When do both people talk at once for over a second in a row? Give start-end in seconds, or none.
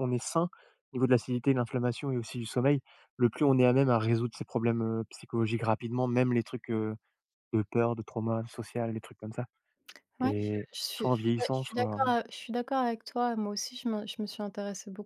10.2-12.0